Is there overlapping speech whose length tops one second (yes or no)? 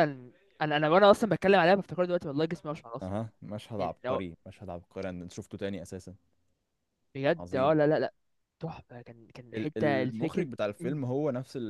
yes